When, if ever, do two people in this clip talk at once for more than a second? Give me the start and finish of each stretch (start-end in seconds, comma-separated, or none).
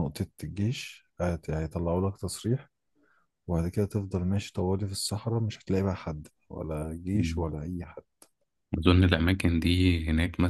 none